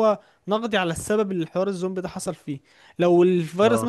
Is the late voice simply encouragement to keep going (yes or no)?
yes